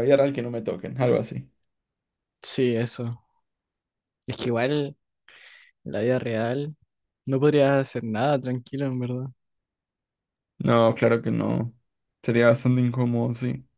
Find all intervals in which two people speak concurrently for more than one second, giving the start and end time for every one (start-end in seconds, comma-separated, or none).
none